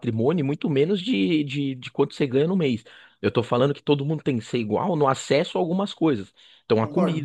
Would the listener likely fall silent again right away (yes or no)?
yes